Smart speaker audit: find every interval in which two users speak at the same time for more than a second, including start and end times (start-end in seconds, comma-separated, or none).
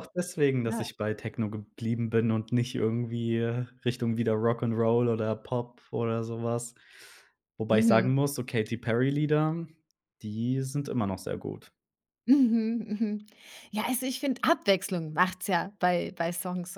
none